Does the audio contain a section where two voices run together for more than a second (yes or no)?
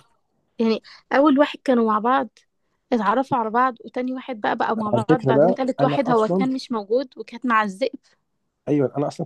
yes